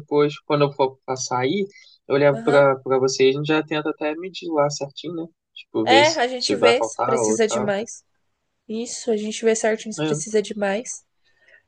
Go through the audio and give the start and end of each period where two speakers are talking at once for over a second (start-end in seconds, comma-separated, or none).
5.8-7.7